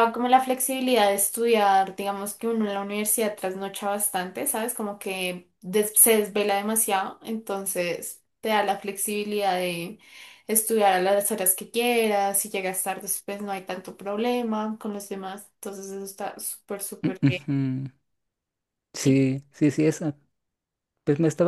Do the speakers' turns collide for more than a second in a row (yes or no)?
no